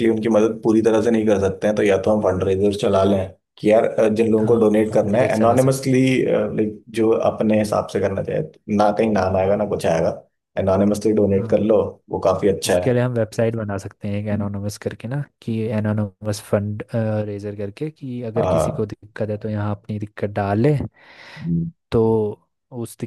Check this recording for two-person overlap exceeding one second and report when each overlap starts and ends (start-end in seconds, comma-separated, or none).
4.4-6.0